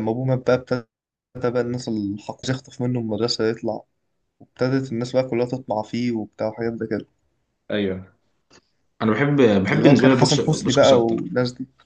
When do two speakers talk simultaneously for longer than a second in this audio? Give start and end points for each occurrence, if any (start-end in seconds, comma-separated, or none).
9.7-11.2